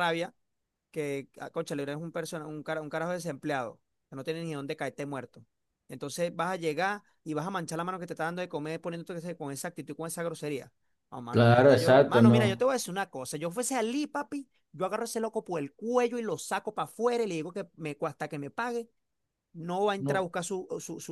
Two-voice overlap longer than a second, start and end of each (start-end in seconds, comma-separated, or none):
11.3-12.7